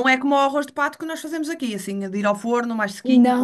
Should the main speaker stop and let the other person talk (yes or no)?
yes